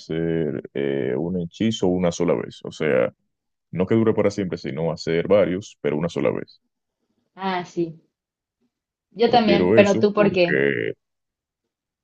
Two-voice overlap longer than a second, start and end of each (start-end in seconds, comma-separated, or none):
9.2-10.7